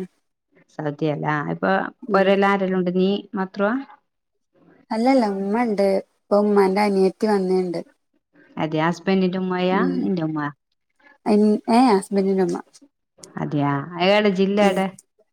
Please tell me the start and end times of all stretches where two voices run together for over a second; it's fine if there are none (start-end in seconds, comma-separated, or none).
none